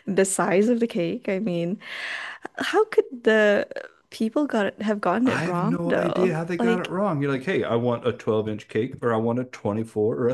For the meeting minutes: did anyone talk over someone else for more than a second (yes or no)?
yes